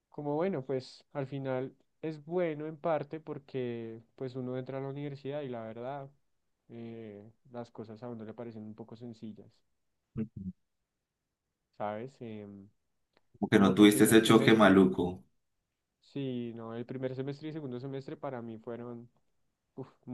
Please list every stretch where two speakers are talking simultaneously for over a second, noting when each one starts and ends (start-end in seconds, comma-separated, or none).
13.5-14.8